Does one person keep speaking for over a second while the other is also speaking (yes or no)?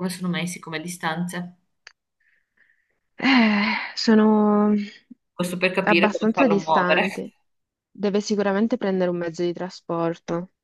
yes